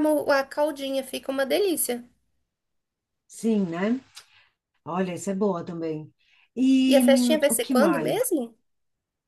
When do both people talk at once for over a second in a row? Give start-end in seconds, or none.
6.9-8.3